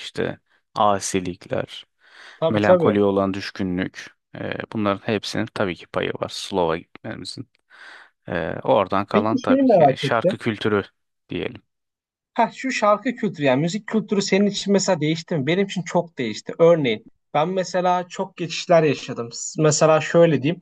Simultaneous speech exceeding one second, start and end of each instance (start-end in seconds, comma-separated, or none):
9.1-10.4